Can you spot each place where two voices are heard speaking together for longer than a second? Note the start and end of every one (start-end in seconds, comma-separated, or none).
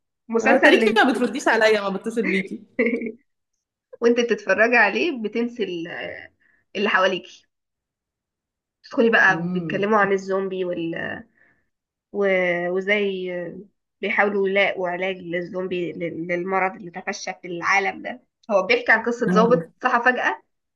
none